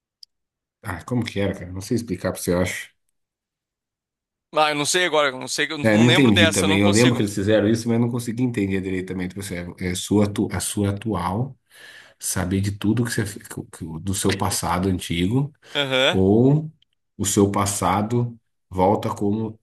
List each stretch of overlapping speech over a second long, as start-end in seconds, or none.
5.8-7.2